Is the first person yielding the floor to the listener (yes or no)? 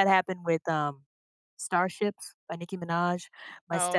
no